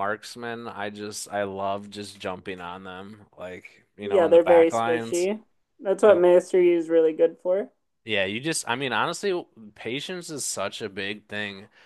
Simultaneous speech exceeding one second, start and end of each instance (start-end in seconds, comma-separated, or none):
4.0-5.3